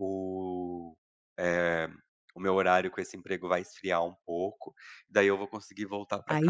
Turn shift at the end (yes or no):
yes